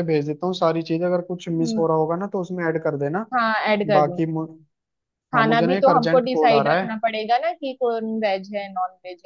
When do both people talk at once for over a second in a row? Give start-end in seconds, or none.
5.3-7.0